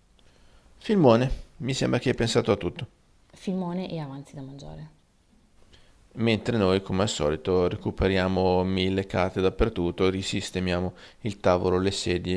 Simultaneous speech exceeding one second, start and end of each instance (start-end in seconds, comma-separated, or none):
none